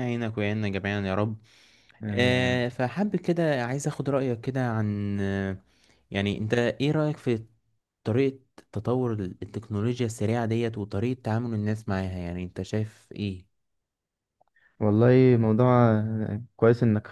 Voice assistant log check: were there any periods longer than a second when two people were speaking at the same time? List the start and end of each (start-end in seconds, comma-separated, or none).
none